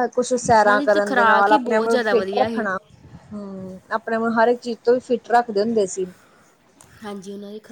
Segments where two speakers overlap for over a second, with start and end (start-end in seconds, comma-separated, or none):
0.6-2.7